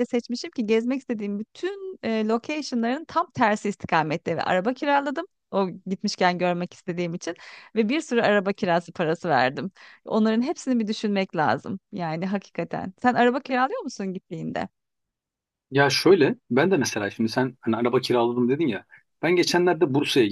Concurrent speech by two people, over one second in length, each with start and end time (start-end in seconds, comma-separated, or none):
none